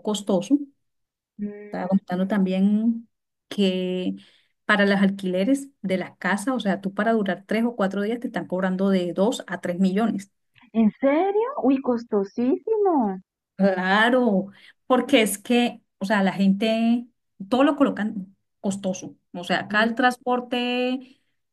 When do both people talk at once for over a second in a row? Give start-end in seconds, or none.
none